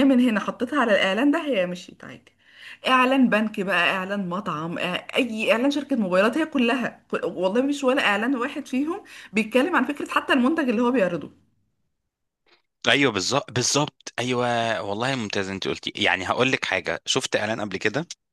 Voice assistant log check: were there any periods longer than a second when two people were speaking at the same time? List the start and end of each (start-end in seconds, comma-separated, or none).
none